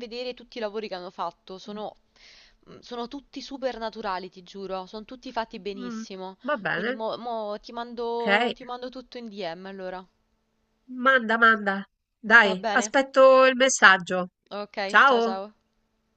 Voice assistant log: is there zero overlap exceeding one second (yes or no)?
yes